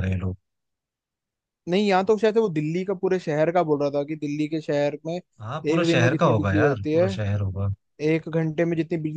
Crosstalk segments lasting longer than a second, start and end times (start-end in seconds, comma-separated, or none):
5.4-7.1